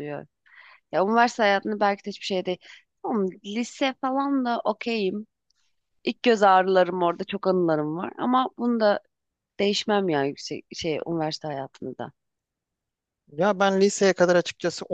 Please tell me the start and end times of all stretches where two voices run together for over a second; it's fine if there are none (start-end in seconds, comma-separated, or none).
none